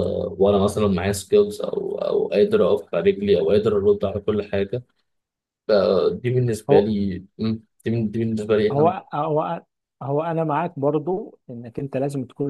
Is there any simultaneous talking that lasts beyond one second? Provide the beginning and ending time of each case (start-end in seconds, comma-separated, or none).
none